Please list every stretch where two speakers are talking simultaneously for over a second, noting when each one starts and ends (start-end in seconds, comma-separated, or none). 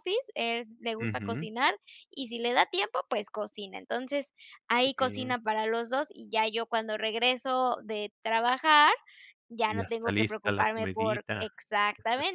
9.7-11.5